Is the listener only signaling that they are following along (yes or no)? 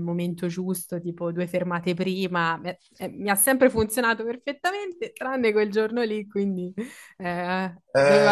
no